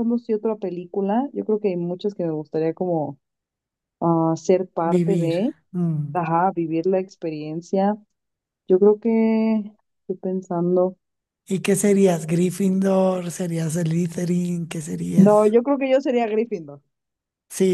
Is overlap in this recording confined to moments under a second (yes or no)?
yes